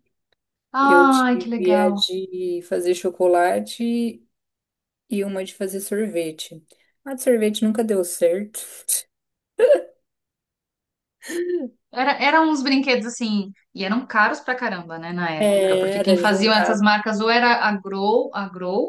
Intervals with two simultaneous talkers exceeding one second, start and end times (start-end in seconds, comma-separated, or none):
0.8-2.0, 15.4-16.9